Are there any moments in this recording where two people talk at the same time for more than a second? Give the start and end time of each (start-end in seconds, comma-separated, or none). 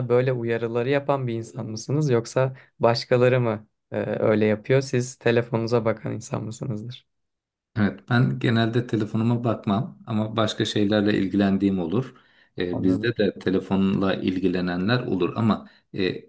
none